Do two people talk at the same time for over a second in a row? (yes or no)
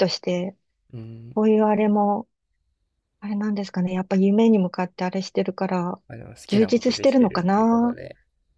yes